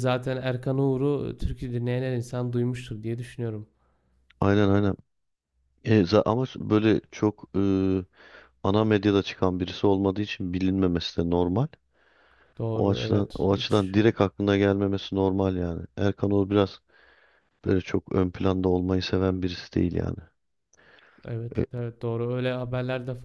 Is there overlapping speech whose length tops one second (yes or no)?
yes